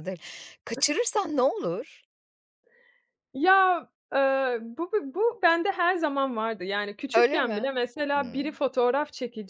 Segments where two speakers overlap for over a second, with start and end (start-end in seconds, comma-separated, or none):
7.1-8.6